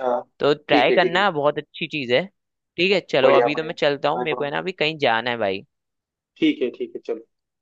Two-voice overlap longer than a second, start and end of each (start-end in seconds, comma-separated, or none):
3.2-4.5